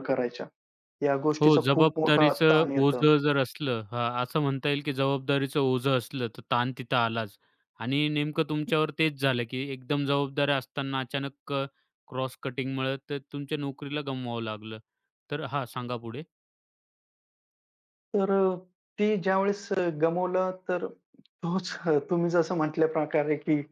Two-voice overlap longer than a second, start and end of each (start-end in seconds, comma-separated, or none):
1.4-3.0